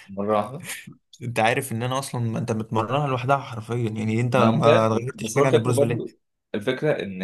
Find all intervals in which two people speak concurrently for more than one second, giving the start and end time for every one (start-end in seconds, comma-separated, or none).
4.3-6.1